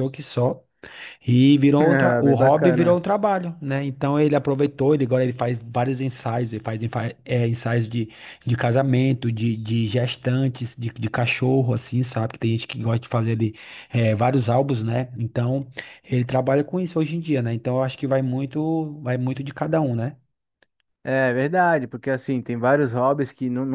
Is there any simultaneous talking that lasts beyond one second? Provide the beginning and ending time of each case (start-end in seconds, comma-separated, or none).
1.8-3.0